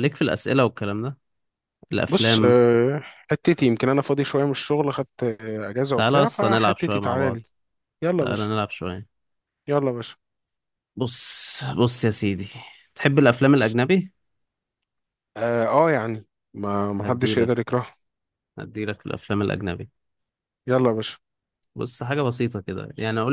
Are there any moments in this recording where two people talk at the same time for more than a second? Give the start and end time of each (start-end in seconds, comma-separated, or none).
6.0-7.5